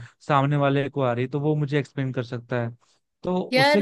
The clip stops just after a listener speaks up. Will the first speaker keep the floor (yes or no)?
yes